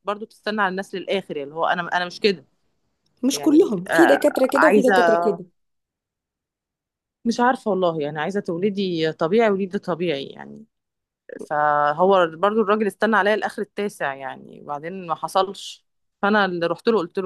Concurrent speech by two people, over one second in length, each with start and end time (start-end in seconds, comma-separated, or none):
3.3-5.0